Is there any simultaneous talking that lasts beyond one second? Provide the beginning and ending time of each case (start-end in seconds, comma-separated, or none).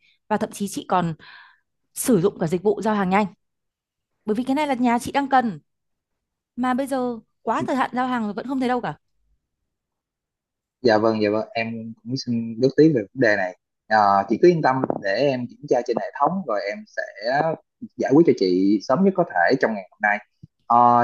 none